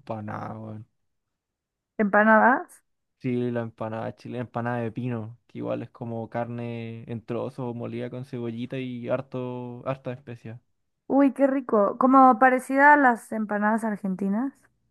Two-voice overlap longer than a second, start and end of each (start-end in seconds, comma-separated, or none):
none